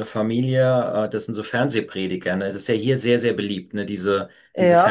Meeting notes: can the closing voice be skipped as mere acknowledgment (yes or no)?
yes